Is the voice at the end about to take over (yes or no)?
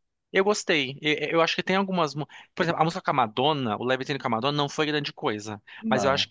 no